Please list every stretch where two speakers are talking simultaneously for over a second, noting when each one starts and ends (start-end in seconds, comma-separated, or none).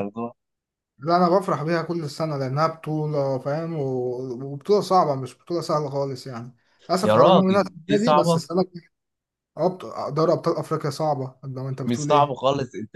7.0-8.4